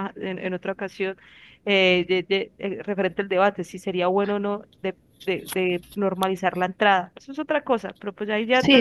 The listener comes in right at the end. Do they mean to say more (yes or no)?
yes